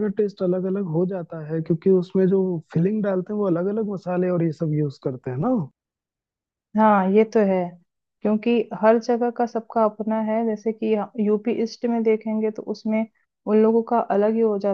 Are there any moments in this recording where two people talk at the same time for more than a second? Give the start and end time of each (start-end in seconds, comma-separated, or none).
none